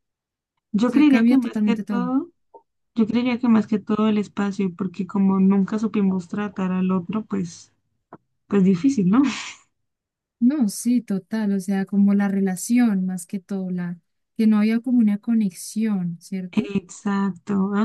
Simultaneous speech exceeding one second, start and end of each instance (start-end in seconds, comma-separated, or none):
0.9-2.1